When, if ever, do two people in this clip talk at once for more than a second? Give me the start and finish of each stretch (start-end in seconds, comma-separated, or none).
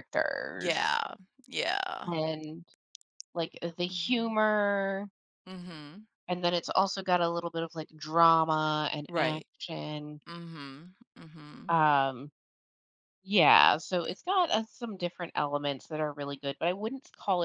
none